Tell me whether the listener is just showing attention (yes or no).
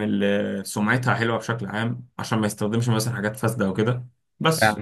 yes